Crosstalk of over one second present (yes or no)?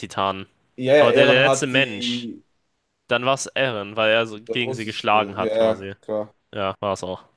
yes